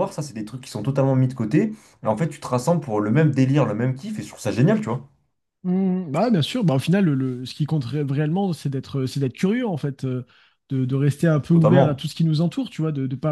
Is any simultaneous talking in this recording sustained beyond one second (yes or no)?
no